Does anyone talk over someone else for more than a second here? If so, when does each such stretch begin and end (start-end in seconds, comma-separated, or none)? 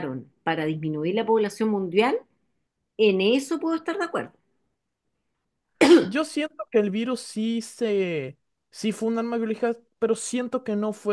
none